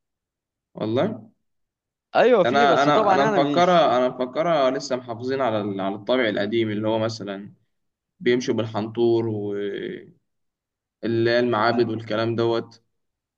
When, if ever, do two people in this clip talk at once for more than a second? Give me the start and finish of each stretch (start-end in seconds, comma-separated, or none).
2.4-3.9